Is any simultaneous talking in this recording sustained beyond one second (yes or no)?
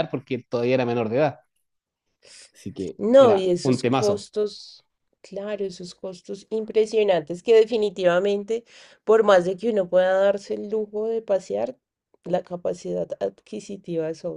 yes